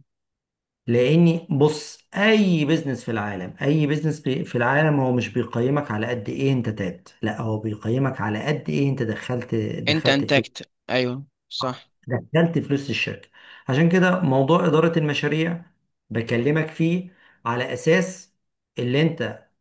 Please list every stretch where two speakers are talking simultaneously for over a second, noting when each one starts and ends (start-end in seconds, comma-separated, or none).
none